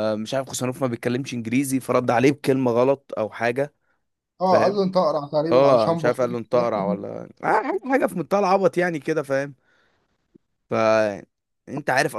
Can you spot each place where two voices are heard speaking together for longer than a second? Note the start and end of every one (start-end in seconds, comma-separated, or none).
5.5-6.7